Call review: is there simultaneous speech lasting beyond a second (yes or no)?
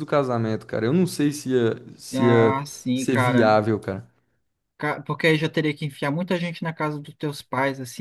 yes